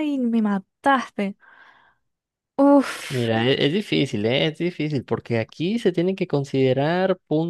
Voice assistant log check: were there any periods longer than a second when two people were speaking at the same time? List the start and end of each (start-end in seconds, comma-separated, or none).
none